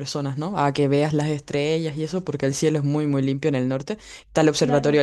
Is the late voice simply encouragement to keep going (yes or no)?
yes